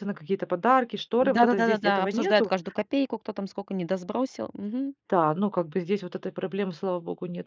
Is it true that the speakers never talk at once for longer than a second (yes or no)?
no